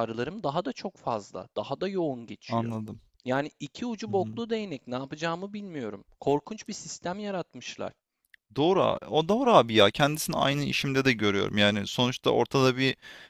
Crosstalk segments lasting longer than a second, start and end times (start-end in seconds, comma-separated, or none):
none